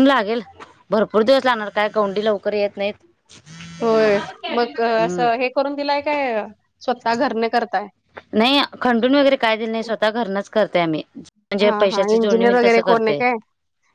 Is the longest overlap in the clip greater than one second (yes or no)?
yes